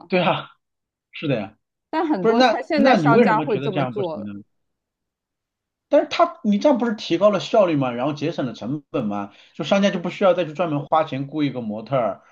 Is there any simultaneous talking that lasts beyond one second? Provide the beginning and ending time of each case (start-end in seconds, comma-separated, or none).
2.2-4.3